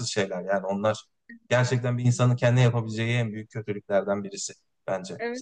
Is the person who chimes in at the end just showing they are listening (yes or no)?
no